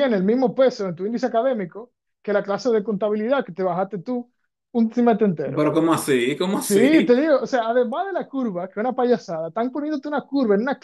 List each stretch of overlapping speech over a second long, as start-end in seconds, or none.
none